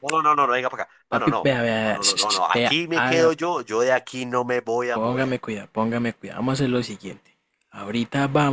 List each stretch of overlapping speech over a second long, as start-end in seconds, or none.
1.1-3.3